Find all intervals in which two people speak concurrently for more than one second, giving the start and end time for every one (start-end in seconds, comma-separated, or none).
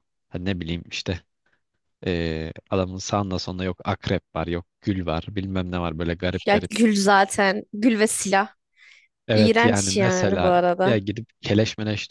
9.3-11.0